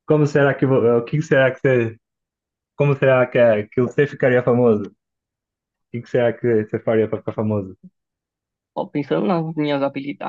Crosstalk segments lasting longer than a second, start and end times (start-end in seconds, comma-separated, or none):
none